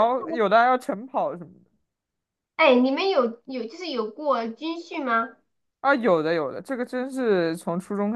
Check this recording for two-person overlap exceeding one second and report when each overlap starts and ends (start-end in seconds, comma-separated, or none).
none